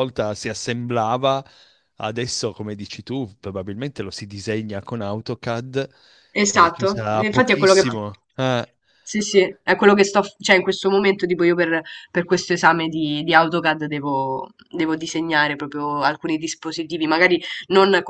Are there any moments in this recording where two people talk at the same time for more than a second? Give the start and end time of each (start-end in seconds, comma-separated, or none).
6.5-8.1